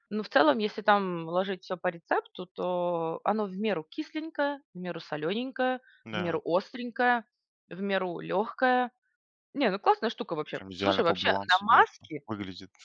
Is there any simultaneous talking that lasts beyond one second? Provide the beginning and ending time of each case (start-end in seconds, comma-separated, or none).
10.5-12.2